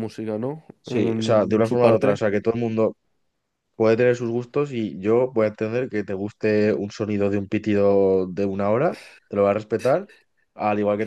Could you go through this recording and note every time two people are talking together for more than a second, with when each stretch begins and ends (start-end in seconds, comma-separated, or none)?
0.8-2.2